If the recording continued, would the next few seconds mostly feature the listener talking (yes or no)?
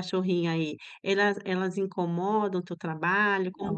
yes